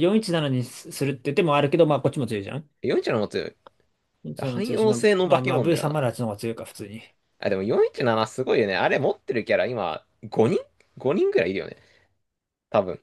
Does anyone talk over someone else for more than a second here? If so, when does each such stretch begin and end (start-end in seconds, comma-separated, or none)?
4.4-6.0